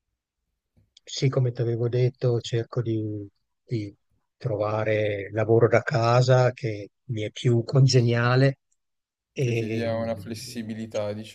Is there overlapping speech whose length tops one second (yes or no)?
yes